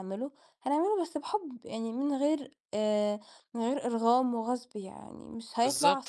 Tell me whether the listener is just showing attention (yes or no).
no